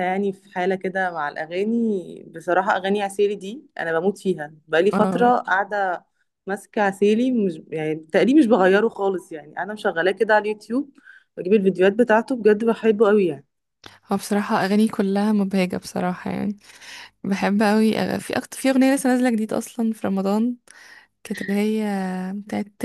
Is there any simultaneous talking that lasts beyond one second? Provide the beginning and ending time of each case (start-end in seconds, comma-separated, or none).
none